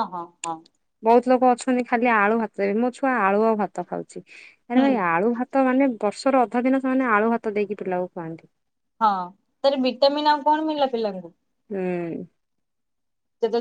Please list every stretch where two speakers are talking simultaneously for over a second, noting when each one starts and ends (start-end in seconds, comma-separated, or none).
none